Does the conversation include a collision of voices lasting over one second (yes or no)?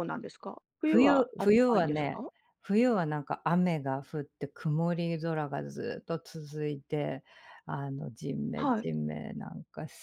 yes